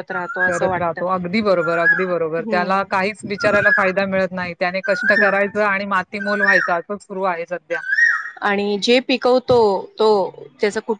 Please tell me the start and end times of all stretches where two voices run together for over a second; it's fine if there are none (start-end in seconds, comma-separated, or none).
none